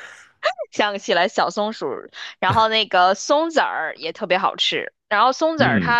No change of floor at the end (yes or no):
yes